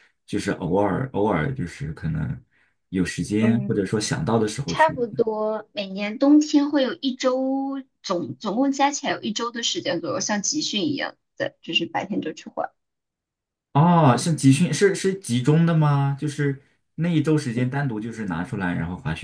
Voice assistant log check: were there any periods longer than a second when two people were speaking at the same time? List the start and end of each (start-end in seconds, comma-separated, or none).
none